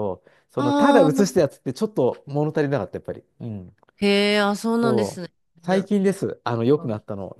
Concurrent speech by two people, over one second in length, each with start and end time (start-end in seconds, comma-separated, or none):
none